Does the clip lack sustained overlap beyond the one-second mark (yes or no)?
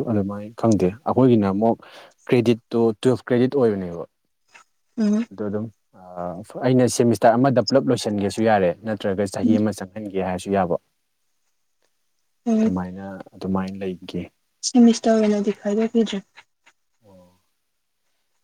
yes